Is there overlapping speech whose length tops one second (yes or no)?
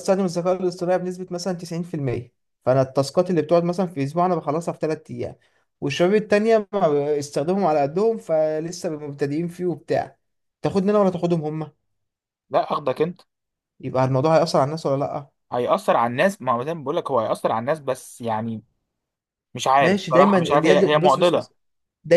yes